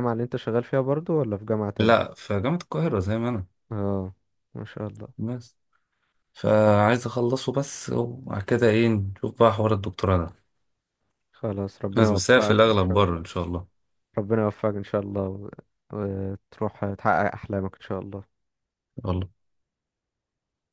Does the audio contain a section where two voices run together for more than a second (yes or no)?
yes